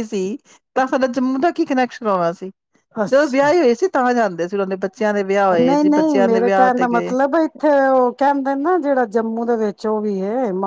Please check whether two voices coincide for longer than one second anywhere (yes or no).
yes